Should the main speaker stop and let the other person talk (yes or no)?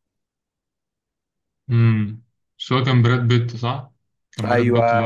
yes